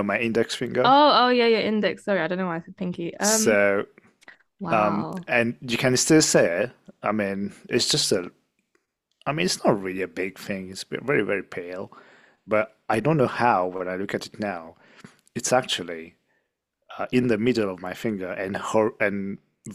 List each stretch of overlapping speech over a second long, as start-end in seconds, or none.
none